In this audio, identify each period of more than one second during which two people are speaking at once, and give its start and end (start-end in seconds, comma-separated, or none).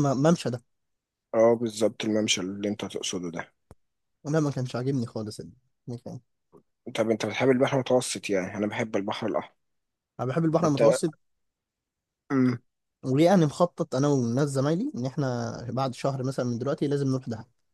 none